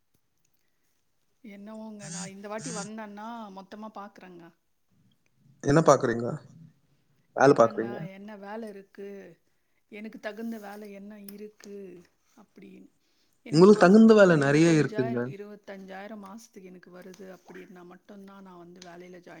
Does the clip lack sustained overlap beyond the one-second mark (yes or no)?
no